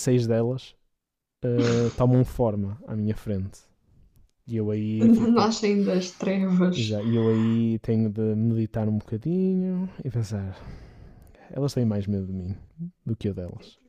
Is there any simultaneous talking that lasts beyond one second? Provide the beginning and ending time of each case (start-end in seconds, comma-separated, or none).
none